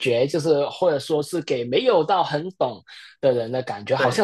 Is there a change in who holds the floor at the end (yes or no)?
no